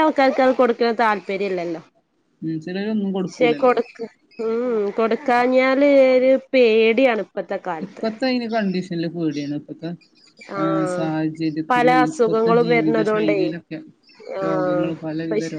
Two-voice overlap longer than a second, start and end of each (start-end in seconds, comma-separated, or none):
11.7-13.4